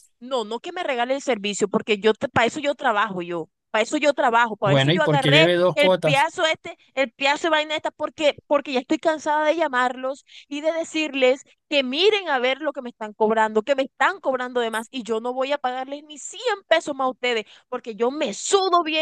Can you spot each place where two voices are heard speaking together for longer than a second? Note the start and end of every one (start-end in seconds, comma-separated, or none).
4.6-6.3